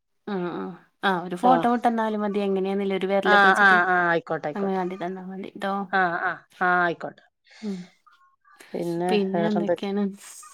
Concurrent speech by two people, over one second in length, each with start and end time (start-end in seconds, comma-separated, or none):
none